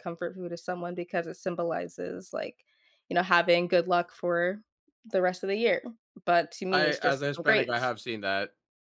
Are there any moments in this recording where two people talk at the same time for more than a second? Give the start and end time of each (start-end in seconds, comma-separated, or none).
6.7-7.9